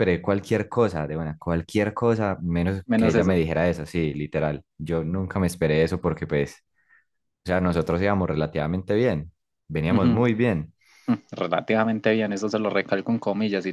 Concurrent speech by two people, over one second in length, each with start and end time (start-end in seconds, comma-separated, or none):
none